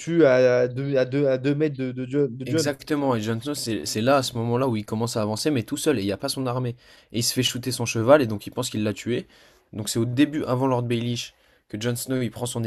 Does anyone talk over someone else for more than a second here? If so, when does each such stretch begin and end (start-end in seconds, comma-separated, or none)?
none